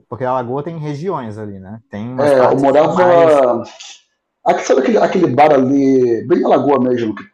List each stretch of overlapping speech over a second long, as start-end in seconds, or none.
2.2-3.4